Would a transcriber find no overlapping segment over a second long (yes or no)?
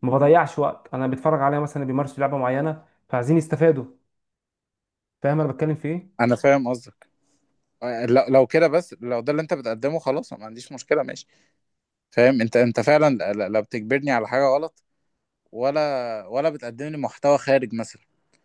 yes